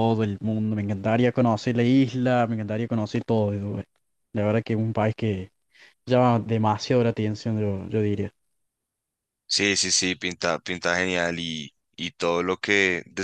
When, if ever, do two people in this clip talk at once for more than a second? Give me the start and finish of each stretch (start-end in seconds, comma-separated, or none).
none